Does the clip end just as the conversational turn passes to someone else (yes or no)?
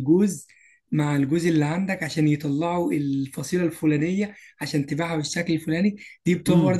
no